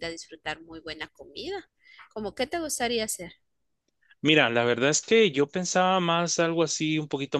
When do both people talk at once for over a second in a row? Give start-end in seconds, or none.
none